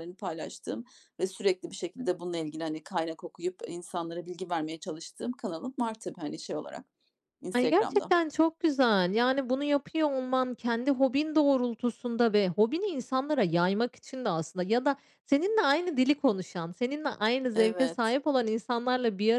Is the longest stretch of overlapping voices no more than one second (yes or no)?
yes